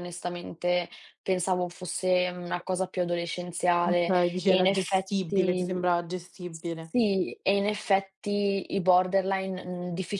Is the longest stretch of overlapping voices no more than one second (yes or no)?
no